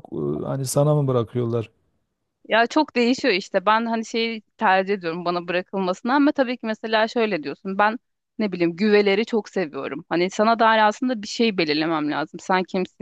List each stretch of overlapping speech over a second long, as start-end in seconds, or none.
none